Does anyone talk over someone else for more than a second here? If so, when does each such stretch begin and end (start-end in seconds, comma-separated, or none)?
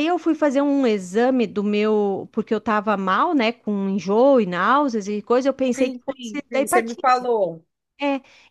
5.7-7.3